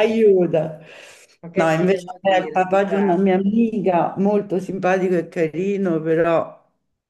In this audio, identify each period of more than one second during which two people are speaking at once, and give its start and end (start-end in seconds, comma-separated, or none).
1.5-3.1